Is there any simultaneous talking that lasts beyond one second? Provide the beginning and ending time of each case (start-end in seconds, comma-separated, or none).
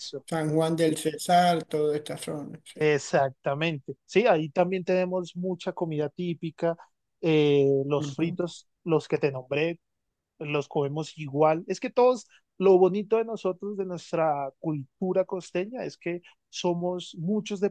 none